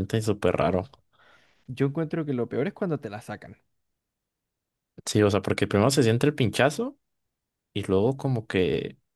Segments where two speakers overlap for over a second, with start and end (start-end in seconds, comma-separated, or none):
none